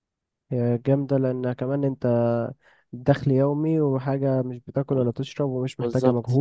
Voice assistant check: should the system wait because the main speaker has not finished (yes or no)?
no